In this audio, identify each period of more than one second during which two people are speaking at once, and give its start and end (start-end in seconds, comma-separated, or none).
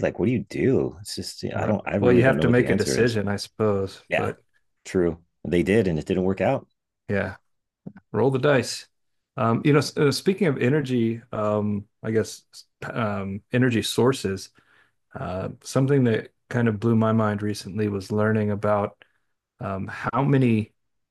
1.6-3.2